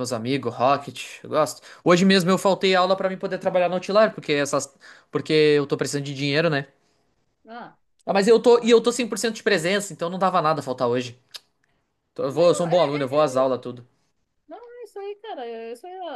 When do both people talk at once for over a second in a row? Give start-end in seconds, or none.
12.3-13.5